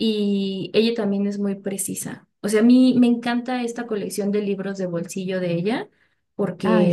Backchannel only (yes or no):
yes